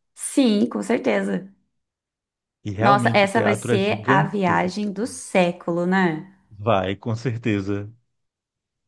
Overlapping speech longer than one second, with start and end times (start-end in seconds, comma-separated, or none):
2.8-5.1